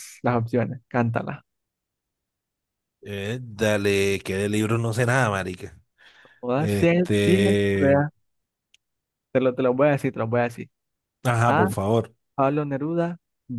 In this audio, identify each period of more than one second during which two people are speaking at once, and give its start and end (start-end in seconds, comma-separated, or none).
6.5-8.0